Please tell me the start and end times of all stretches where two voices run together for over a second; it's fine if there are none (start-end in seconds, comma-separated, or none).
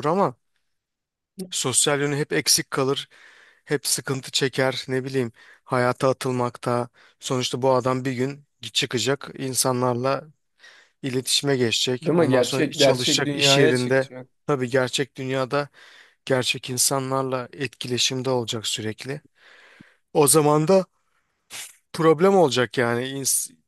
12.0-14.1